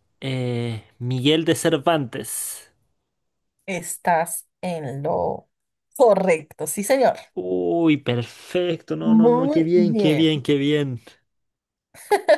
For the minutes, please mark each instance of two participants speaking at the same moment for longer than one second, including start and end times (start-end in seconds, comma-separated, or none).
9.0-10.3